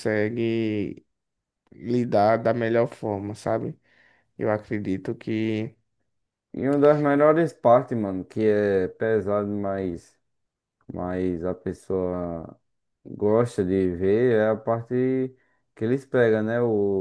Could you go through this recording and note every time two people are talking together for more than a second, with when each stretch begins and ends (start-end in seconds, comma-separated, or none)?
none